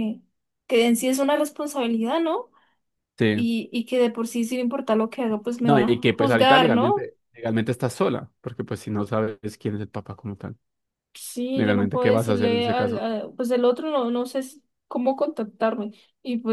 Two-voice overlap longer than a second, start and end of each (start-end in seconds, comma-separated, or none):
5.6-7.1, 11.5-13.1